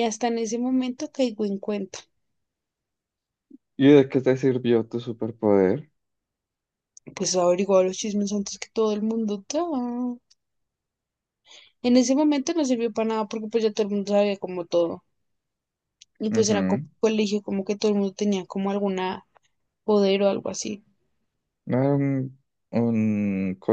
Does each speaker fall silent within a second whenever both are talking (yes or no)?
yes